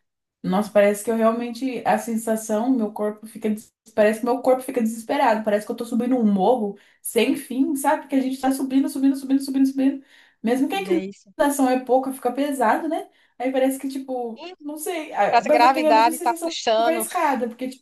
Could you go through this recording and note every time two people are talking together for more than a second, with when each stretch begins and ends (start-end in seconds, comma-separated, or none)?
15.3-17.0